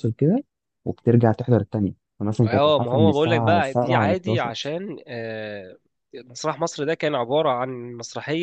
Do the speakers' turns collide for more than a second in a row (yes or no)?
yes